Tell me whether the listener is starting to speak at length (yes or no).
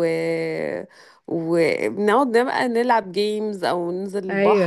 no